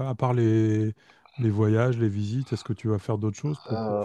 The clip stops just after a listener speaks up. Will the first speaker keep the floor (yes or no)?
no